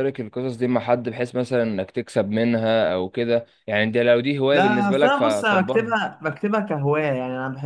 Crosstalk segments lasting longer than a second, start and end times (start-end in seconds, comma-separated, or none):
4.5-5.9